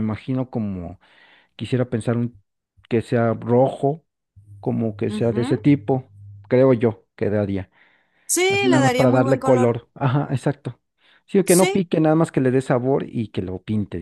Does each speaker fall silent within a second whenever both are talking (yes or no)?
no